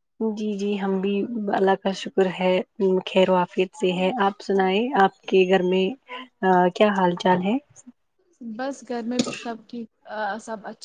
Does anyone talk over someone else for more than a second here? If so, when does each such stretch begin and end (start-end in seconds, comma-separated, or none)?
none